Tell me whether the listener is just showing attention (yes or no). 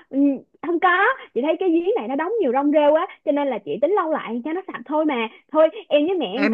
no